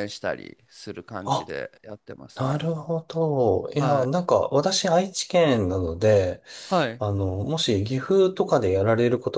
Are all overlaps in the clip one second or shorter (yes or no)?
yes